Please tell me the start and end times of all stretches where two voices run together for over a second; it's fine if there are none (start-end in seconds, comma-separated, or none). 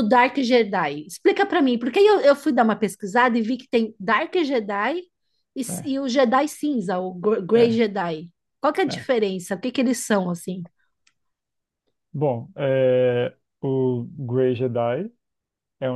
none